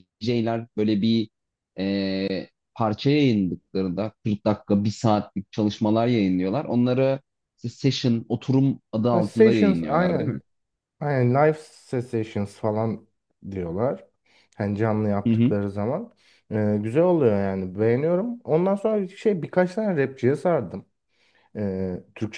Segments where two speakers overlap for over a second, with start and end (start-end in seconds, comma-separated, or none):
9.1-10.3